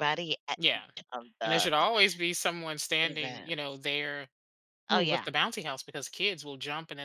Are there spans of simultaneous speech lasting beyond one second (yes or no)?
no